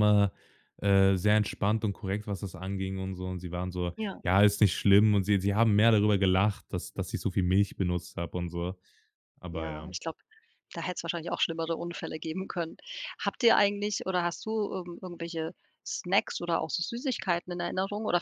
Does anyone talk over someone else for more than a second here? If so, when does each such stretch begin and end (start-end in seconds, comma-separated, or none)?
none